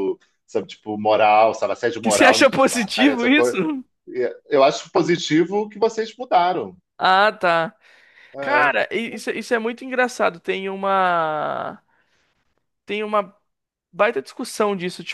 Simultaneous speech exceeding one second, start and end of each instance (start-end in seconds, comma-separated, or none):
2.0-3.6